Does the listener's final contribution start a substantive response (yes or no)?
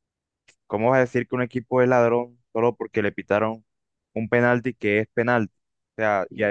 no